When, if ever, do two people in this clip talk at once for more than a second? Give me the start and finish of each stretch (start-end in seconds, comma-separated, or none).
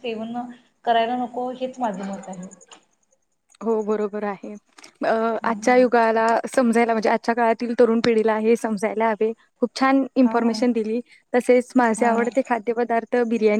none